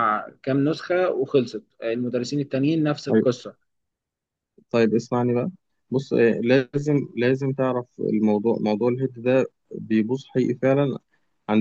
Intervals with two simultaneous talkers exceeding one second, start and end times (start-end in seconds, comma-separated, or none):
none